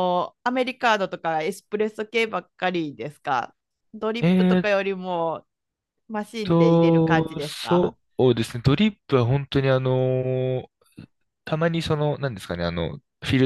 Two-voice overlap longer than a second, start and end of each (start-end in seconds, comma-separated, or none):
6.4-8.0